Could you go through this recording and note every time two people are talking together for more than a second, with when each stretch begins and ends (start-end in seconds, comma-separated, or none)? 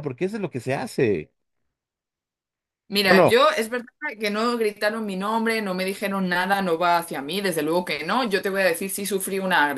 none